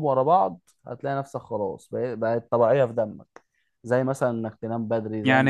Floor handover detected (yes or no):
yes